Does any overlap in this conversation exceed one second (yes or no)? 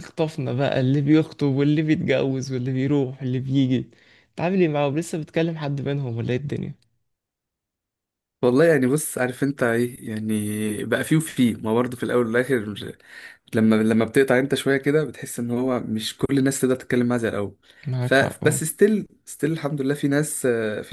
no